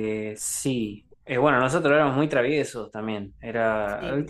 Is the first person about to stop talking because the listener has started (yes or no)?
no